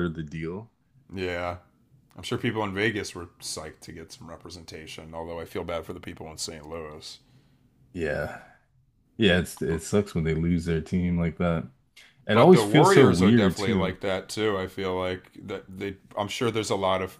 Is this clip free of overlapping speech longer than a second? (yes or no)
no